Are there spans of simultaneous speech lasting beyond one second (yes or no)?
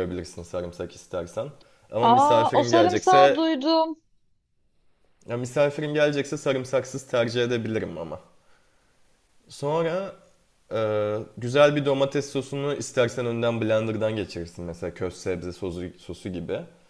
yes